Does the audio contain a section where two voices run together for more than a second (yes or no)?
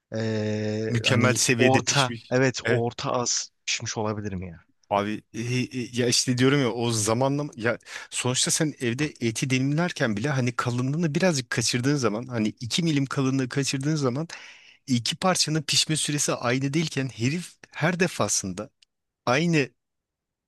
yes